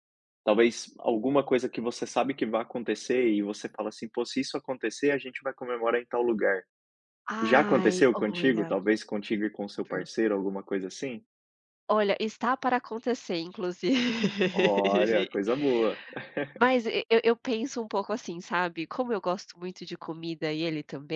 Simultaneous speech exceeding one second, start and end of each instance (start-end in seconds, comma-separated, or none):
7.4-8.7